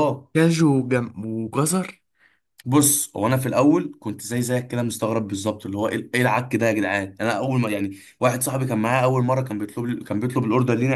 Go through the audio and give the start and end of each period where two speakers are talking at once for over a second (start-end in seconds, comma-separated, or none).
none